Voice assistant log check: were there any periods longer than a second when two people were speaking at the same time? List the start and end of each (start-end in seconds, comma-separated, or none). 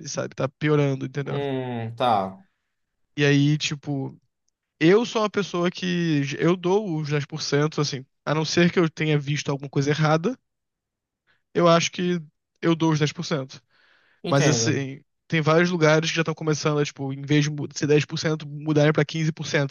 none